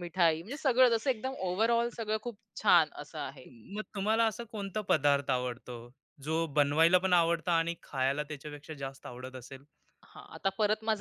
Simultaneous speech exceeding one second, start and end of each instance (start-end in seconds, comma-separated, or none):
none